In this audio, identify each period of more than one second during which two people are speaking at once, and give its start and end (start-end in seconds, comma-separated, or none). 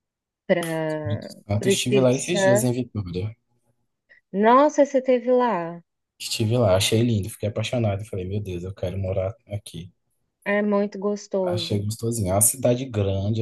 0.9-2.7